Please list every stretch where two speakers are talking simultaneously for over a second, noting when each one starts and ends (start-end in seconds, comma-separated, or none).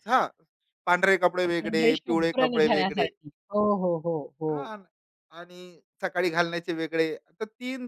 1.5-3.1